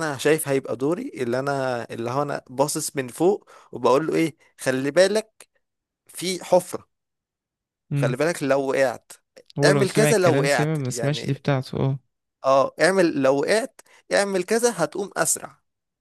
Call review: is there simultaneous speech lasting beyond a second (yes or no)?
yes